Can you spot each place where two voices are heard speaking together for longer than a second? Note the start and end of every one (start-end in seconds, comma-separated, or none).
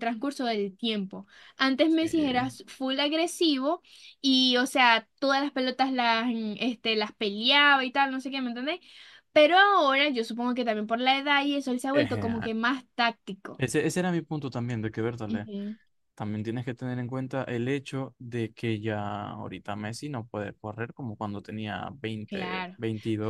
none